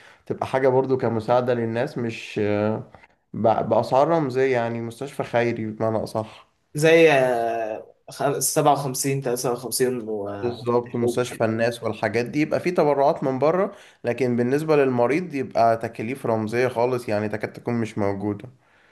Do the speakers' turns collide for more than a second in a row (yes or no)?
no